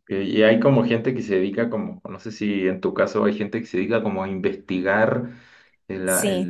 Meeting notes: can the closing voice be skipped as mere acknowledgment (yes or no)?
yes